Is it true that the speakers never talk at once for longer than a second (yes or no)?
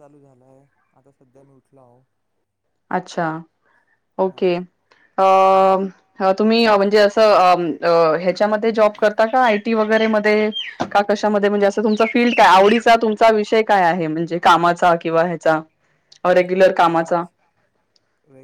yes